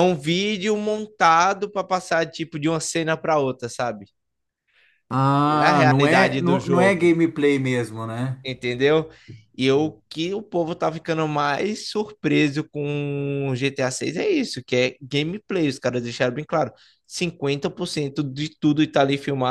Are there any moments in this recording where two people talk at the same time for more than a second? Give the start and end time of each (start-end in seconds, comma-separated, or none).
5.5-7.1